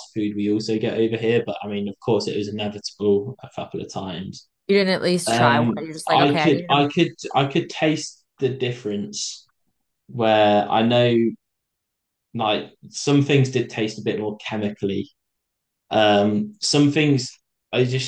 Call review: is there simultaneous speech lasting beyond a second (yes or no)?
yes